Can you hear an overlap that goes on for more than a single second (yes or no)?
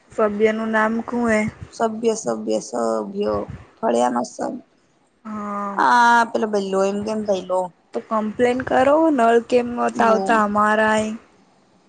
no